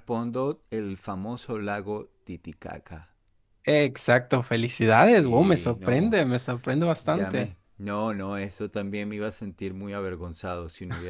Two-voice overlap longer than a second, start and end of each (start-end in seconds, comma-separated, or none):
4.9-6.2